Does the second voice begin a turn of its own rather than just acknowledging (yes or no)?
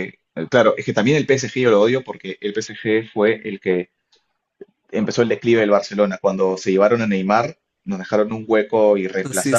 no